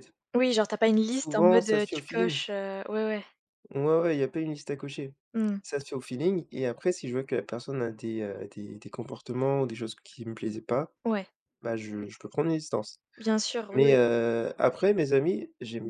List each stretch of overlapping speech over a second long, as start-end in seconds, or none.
1.1-2.4